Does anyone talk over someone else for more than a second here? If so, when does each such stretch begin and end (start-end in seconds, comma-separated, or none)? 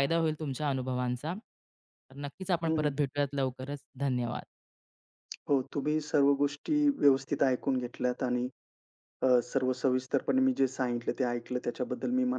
none